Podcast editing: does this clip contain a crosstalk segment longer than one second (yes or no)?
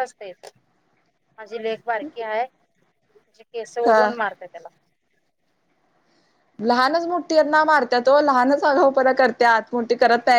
no